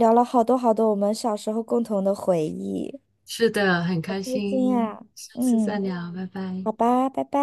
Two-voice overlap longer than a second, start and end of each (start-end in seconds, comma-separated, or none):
4.1-5.8